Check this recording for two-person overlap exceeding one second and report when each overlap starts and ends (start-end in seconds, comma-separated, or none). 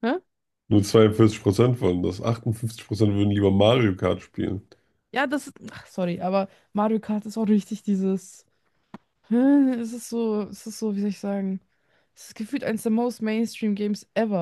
none